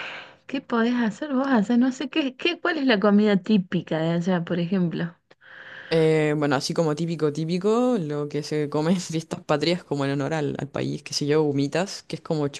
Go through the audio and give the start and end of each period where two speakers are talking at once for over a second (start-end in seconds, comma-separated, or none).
none